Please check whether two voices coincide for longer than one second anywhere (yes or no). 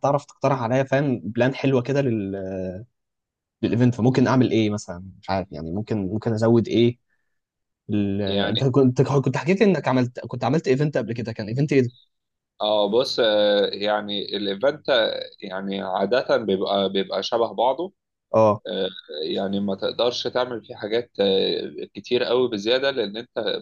no